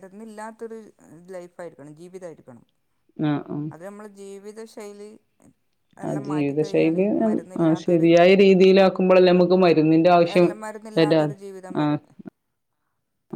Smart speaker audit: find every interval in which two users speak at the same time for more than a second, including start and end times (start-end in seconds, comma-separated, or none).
none